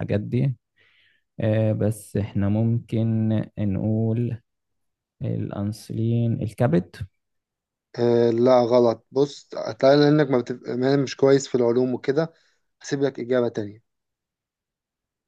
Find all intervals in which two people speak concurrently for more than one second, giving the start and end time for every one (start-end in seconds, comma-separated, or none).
none